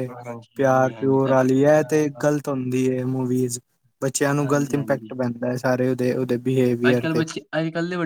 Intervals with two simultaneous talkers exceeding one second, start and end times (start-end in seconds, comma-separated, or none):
0.6-2.3